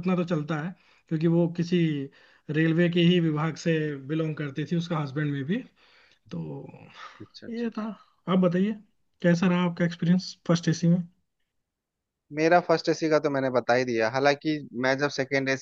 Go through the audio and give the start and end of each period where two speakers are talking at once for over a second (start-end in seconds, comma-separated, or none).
none